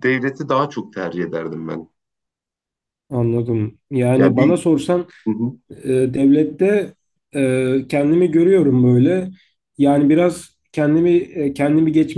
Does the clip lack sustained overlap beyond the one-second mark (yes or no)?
yes